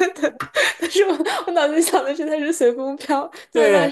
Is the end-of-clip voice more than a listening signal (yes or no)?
yes